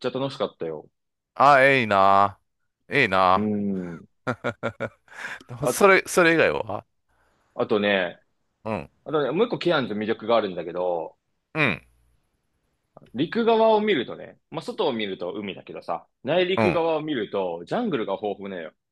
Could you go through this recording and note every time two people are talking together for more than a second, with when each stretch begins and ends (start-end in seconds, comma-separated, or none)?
none